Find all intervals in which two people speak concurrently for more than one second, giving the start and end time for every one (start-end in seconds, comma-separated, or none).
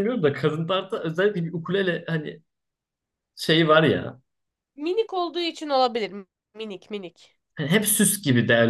none